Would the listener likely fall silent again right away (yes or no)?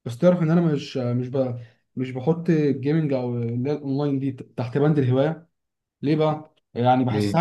yes